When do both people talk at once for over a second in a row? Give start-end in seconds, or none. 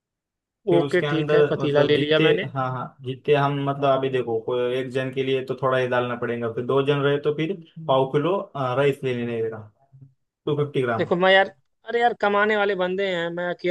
0.7-2.5